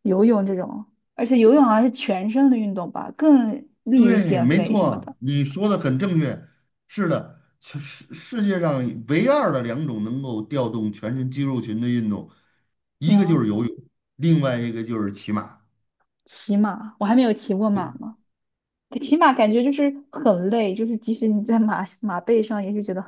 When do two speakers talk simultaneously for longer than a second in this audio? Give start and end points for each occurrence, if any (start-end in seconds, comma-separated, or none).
3.9-5.1